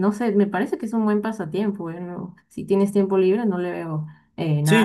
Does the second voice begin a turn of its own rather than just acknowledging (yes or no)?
yes